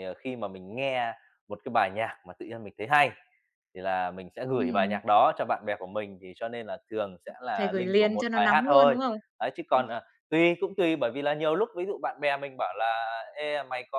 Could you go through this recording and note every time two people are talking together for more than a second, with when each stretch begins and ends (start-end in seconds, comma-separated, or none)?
7.6-9.0